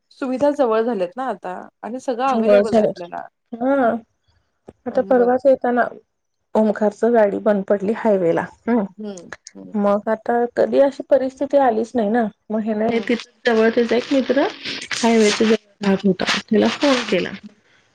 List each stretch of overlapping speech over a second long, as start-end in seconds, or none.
none